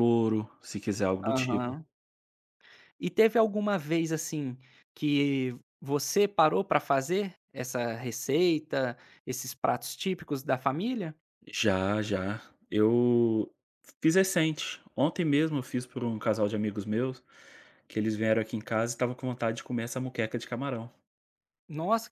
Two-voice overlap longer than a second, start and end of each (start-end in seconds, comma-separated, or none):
none